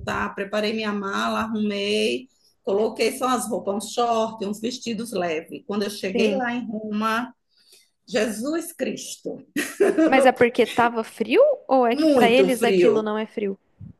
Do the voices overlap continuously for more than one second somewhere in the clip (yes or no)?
yes